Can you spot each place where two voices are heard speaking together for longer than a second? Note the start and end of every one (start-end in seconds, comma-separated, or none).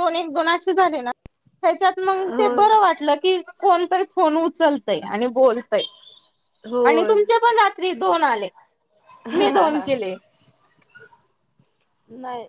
none